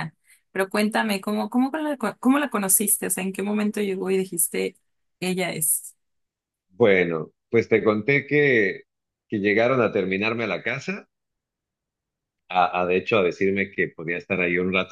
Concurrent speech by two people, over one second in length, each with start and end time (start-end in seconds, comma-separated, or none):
none